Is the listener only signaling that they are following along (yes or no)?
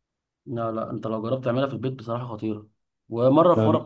yes